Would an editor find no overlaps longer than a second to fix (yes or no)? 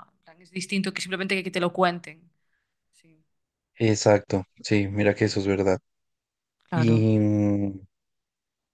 yes